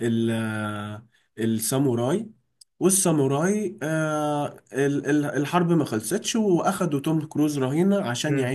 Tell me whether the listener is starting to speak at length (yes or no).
yes